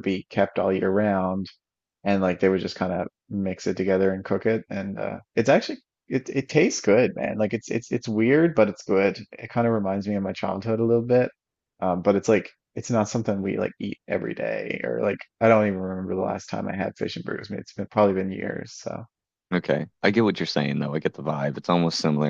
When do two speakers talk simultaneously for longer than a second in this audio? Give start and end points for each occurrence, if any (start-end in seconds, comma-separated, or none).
none